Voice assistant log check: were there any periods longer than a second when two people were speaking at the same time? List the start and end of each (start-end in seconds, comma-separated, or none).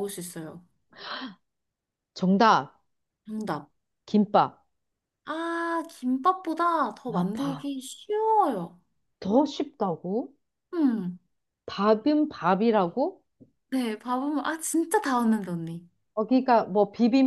none